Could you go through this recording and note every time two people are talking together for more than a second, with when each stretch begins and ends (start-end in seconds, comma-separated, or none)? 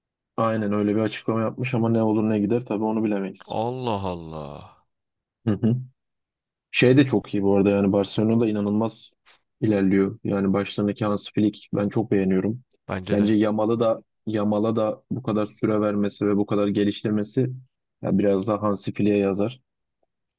none